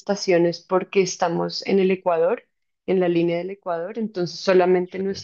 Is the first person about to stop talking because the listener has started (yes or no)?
no